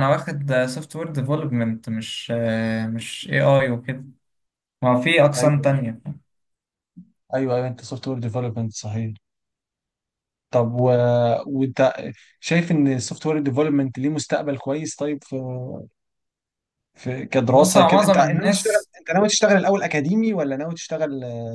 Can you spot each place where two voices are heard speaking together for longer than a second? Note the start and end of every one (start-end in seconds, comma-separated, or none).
17.5-18.9